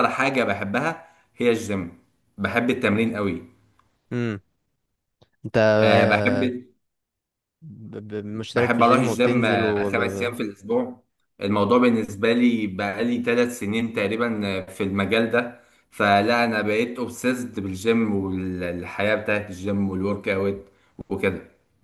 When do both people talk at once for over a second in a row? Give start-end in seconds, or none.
8.5-9.9